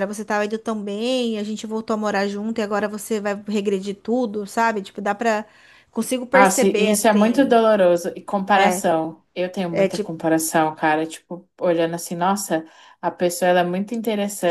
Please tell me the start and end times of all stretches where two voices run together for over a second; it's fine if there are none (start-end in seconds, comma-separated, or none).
6.3-7.6